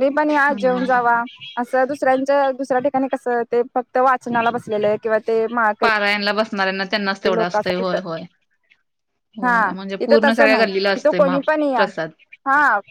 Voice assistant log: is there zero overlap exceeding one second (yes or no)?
no